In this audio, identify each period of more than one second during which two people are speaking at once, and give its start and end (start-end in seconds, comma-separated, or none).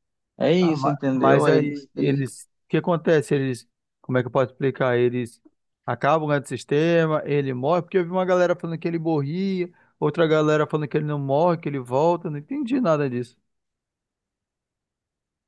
0.6-2.4